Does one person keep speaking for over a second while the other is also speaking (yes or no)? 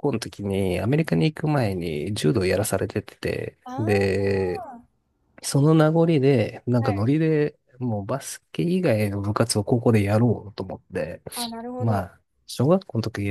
no